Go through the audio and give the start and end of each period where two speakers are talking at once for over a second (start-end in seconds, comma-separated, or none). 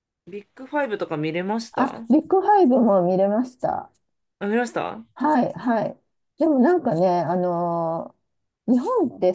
none